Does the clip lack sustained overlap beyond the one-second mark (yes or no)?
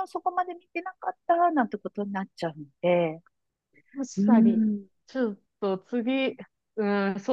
yes